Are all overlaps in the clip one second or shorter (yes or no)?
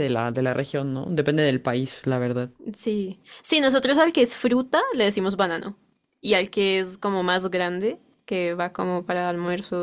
yes